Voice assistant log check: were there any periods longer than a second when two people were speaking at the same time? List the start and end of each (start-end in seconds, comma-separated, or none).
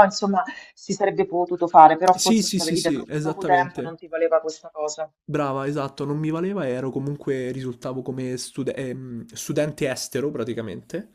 2.1-4.0